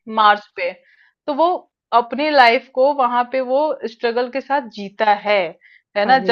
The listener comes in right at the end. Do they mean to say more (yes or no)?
no